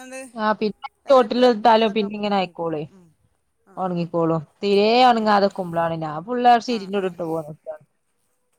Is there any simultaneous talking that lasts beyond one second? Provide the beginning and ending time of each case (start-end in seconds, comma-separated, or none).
1.1-2.8